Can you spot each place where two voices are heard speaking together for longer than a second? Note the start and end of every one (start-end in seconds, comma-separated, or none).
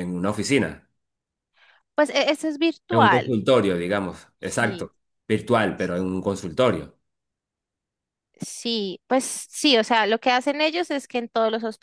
none